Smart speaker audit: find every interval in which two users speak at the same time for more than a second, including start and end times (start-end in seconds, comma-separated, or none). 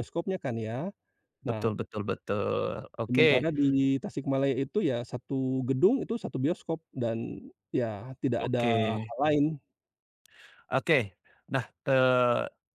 none